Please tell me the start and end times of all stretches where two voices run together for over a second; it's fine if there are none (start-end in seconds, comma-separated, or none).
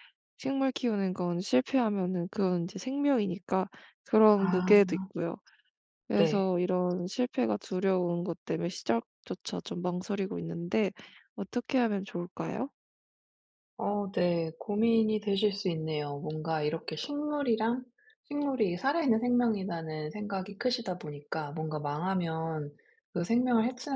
none